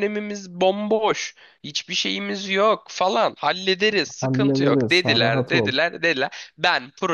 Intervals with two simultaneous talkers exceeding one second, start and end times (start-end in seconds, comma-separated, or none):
4.2-5.7